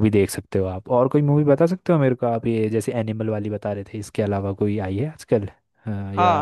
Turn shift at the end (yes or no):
yes